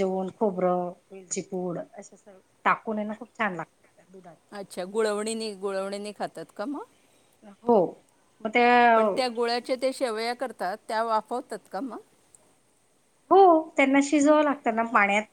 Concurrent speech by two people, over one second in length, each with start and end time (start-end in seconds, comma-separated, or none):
none